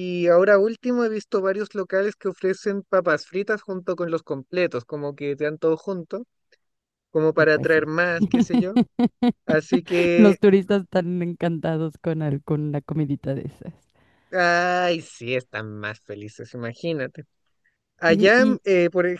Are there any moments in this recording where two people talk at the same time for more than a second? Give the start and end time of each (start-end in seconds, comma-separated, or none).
none